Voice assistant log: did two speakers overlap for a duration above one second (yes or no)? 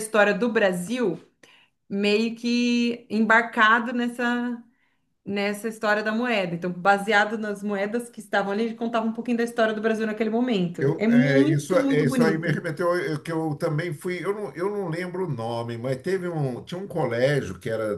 yes